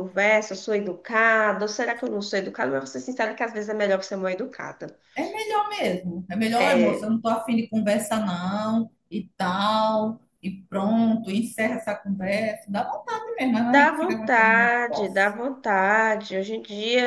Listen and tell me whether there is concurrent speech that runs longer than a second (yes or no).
yes